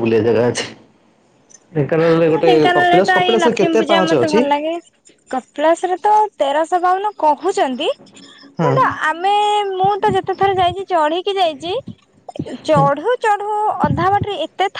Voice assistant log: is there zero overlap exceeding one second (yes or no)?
no